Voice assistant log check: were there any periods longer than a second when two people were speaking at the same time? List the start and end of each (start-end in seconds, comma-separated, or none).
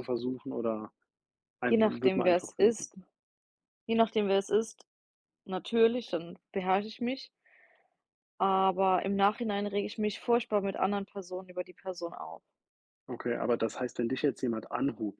1.7-2.9